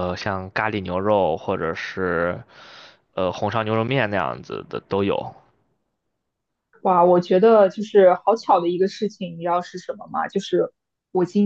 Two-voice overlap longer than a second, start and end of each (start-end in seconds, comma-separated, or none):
none